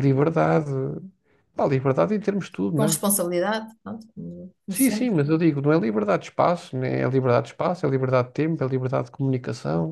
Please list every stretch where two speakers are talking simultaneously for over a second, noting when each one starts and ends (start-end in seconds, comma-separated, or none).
none